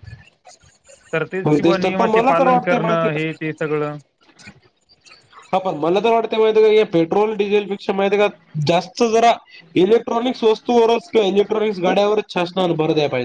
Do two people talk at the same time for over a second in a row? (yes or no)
yes